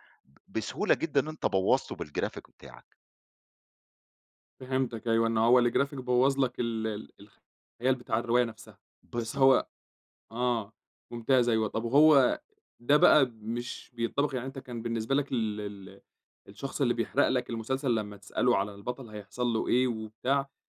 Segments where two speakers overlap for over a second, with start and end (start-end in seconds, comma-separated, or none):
none